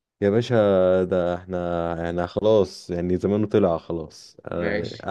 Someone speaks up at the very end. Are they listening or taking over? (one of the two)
taking over